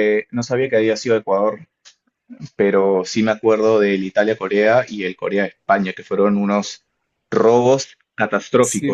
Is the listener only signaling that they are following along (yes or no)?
no